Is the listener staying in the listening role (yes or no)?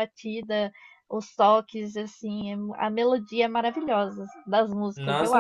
no